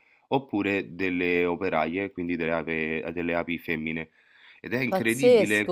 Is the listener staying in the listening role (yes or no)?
no